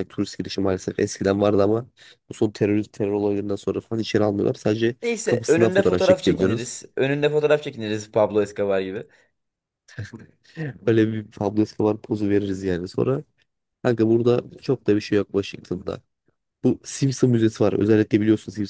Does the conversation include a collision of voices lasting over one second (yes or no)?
yes